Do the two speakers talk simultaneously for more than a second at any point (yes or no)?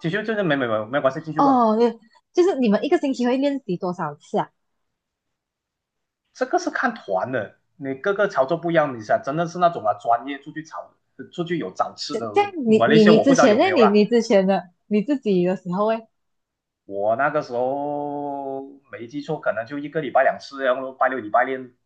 yes